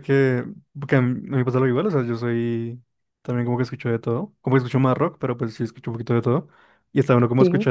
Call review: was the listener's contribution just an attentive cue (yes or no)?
yes